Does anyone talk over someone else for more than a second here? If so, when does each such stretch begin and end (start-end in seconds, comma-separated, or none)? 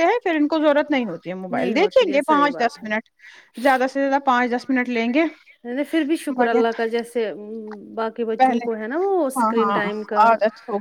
1.6-2.9